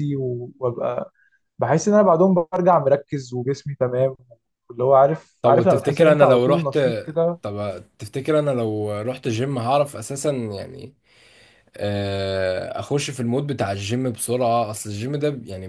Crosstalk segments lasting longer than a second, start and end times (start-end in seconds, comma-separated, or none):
5.4-6.8